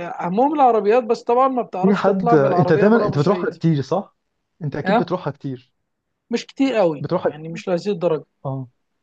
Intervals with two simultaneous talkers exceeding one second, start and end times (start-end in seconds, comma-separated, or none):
1.8-3.5